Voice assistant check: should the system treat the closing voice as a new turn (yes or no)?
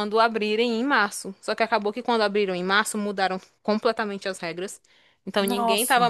no